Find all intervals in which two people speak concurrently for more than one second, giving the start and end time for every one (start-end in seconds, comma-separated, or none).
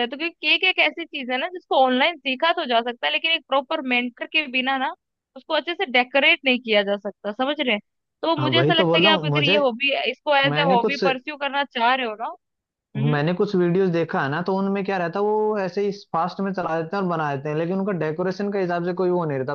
8.4-9.7